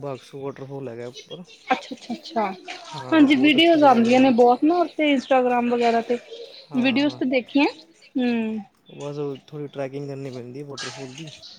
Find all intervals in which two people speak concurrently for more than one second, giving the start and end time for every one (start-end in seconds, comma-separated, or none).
3.1-4.3